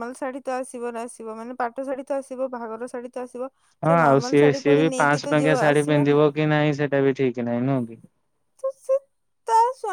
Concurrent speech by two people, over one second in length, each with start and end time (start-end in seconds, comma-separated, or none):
3.9-6.2